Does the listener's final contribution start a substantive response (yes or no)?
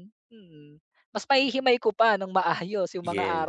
no